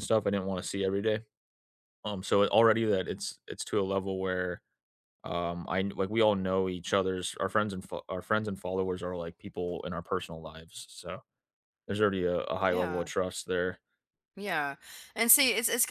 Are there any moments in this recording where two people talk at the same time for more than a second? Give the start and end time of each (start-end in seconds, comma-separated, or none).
none